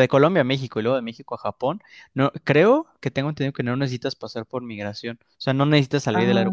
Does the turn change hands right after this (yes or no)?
yes